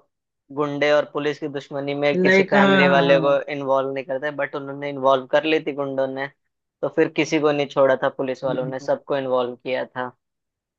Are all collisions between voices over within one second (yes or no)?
no